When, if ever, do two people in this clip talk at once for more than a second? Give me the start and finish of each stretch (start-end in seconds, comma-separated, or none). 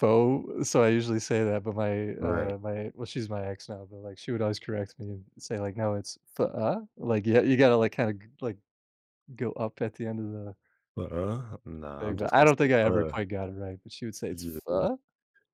12.0-13.2